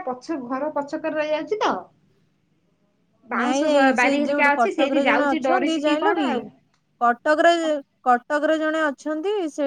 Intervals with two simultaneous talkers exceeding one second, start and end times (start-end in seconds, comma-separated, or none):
3.4-6.1